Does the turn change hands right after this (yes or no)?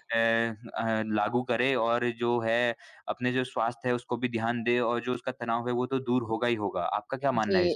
yes